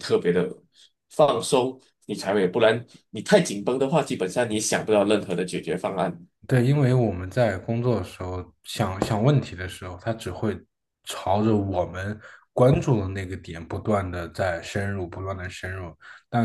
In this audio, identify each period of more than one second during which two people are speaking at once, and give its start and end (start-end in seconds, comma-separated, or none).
none